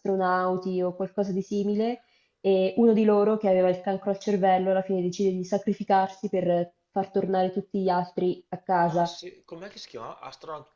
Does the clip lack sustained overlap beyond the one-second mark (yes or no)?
yes